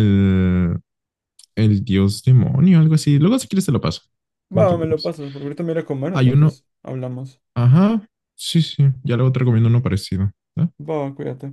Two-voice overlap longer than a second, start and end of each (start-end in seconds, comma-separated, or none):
none